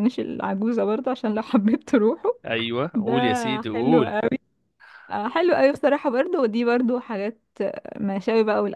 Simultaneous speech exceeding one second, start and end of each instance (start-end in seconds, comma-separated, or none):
none